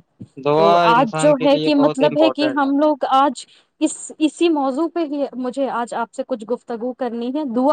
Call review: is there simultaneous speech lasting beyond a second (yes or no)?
yes